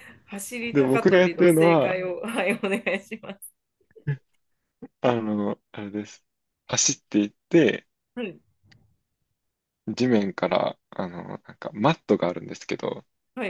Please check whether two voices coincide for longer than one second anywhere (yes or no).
yes